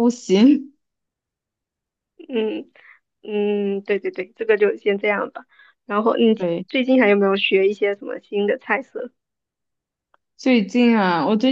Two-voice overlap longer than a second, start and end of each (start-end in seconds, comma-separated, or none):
none